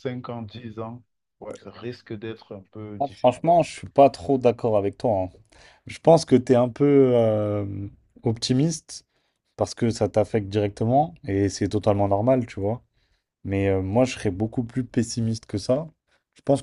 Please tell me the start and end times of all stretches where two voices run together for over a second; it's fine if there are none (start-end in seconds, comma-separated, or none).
none